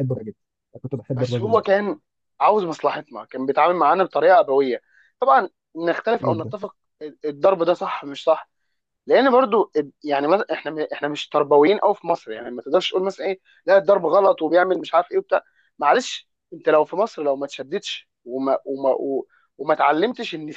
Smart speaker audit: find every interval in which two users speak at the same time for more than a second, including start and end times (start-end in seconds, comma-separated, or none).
none